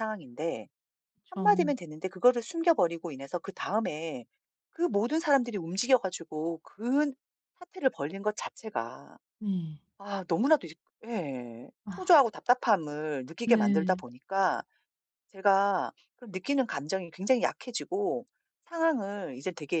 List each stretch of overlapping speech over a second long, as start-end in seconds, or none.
none